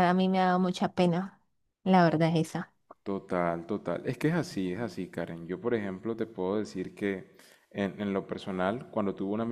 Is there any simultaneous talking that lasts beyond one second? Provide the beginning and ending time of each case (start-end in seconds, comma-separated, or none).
none